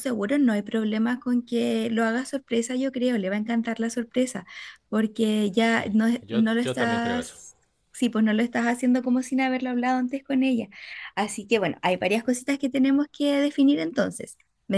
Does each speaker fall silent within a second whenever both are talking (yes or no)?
no